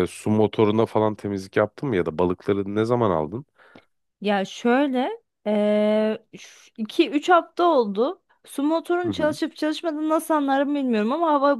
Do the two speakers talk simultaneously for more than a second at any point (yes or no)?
no